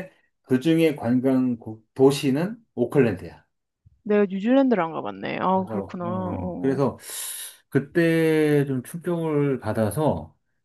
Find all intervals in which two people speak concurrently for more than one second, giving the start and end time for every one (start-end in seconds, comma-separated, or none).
5.5-6.8